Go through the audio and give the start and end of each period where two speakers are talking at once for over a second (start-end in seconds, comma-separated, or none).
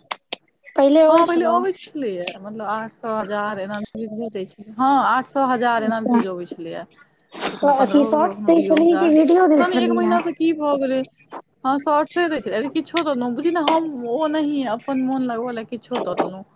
7.6-10.2